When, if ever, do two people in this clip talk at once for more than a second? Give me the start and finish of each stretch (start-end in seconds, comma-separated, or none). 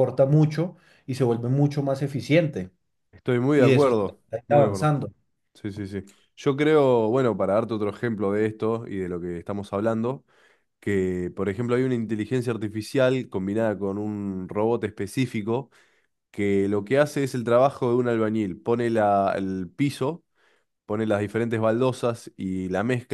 3.5-5.0